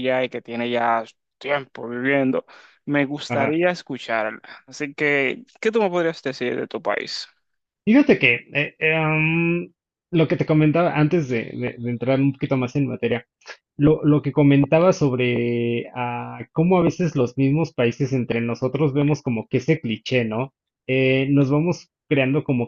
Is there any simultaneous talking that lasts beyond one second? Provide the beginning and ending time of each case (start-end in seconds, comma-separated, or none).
none